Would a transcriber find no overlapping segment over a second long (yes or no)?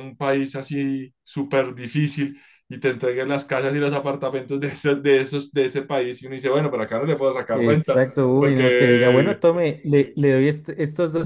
no